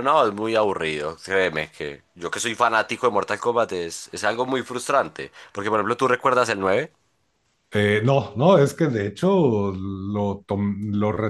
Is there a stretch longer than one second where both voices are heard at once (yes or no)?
no